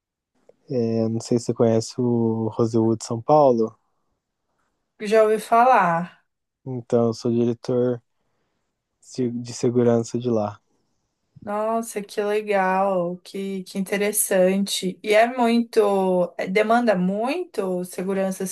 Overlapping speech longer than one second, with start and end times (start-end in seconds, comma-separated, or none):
none